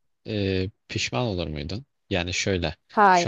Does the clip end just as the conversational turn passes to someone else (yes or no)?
no